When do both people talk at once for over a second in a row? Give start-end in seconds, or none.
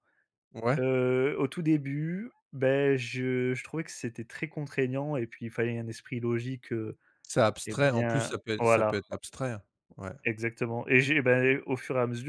7.7-9.0